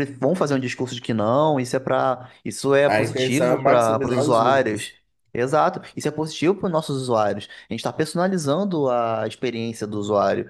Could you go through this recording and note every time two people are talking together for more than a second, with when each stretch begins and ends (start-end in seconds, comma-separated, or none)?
2.9-4.9